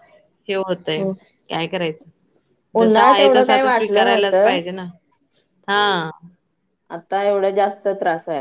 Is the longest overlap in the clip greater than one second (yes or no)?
yes